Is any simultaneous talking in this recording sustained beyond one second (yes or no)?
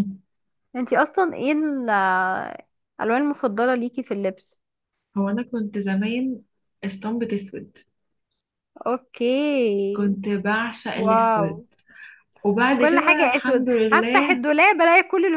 yes